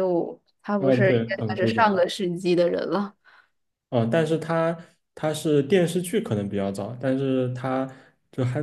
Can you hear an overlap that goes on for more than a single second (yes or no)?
yes